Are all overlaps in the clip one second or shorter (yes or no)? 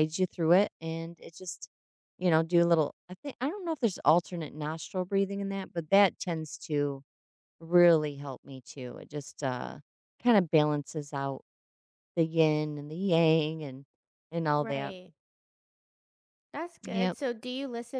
yes